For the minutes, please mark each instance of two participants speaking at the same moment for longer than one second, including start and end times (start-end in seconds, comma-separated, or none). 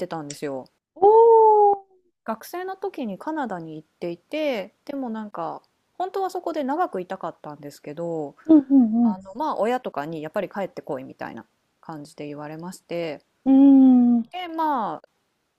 none